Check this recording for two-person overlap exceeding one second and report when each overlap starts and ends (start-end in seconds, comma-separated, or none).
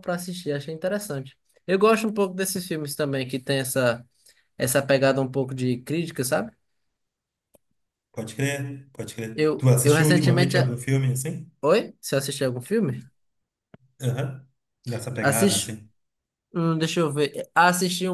9.3-10.7